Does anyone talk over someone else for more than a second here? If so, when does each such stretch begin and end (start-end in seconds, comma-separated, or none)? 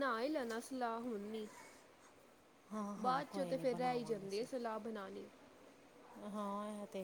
3.0-4.5